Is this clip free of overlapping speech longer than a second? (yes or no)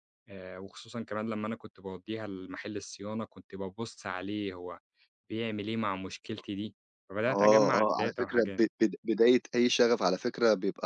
no